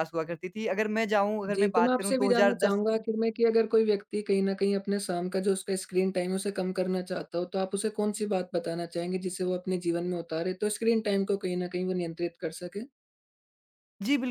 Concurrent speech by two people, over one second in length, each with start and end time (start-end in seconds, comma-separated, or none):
1.5-3.0